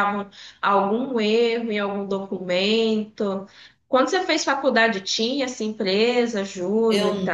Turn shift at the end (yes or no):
yes